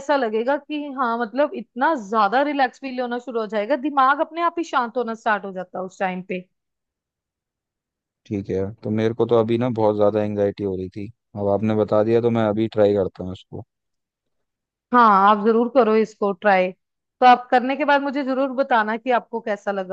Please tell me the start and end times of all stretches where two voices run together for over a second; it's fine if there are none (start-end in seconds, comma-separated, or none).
none